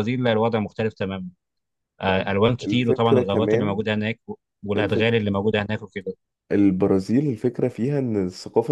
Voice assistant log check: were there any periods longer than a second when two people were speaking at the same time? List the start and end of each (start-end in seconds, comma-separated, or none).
2.0-3.8